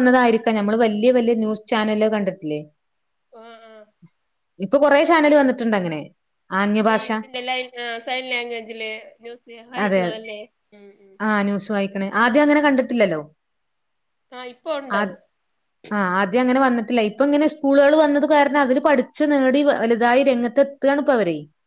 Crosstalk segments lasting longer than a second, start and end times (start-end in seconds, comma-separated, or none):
none